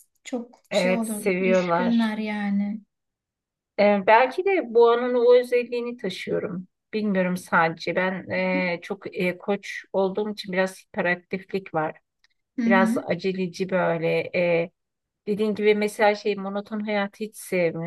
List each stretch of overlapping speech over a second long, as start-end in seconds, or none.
0.7-2.1